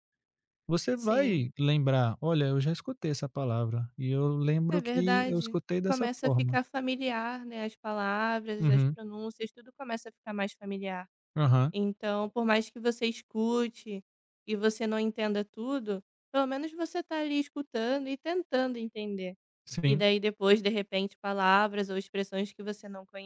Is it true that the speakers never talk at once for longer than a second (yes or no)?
no